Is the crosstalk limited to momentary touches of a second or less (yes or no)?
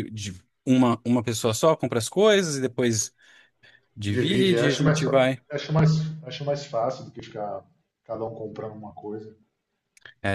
no